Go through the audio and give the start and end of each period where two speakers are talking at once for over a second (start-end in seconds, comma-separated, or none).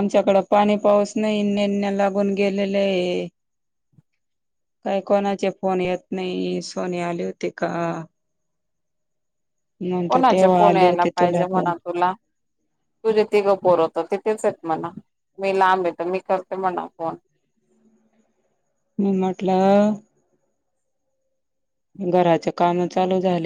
10.1-11.7